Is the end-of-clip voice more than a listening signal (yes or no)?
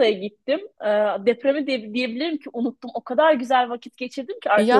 no